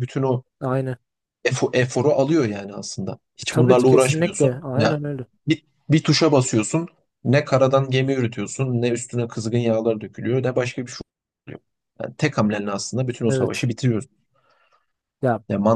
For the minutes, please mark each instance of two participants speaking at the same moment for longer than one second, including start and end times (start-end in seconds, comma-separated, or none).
3.4-5.0